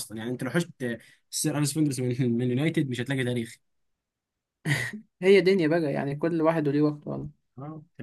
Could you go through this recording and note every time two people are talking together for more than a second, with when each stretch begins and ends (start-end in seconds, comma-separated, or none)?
none